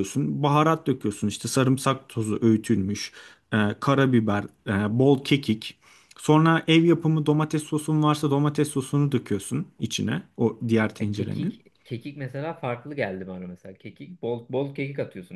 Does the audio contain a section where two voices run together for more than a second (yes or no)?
no